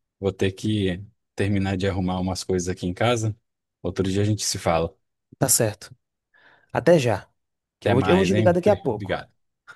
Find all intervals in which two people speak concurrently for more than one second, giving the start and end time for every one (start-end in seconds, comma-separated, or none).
7.8-9.2